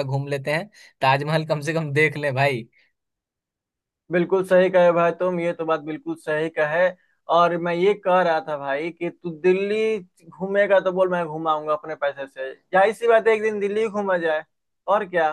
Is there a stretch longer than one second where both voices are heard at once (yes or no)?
no